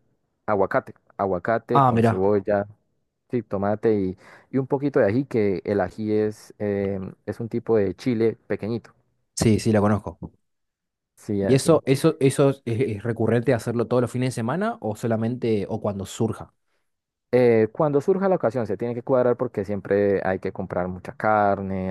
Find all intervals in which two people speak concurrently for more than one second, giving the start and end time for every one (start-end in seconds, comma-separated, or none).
none